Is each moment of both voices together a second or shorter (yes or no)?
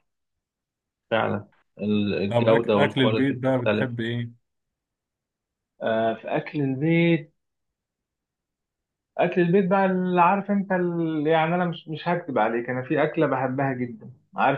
no